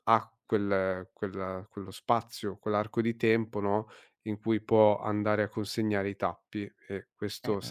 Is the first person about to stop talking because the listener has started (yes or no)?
no